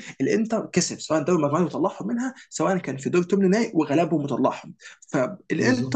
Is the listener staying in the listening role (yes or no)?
yes